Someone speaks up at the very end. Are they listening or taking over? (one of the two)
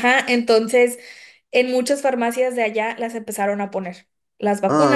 listening